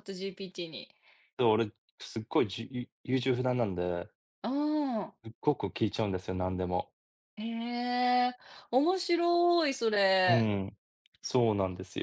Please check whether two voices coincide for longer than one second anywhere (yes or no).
no